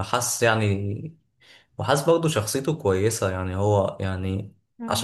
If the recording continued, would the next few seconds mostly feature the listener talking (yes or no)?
no